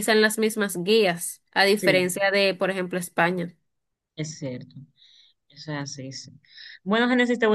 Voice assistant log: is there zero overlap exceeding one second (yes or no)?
yes